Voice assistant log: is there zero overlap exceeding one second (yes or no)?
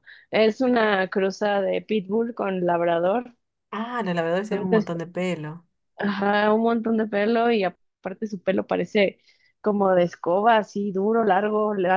yes